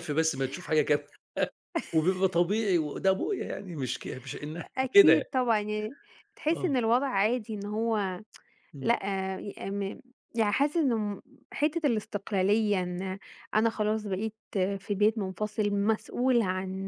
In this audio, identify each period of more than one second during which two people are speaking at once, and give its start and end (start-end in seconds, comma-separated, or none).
none